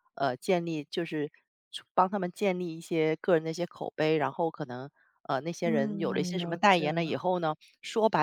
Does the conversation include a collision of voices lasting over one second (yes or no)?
yes